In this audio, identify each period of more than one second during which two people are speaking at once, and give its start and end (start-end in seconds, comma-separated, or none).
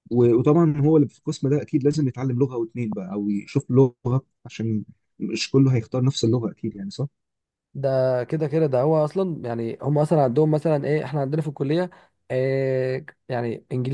none